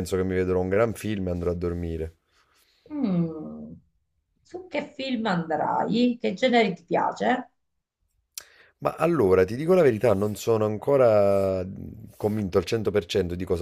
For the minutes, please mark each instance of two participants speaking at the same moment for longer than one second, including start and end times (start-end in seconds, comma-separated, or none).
none